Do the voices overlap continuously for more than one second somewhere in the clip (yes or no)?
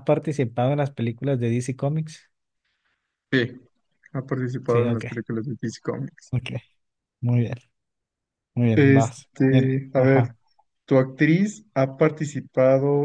yes